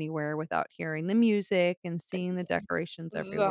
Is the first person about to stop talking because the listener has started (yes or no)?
yes